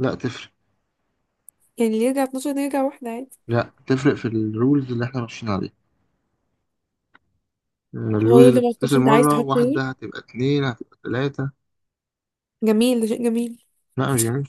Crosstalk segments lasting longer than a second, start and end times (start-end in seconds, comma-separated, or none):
8.2-9.8